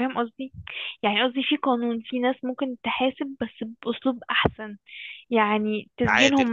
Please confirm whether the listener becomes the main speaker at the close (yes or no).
no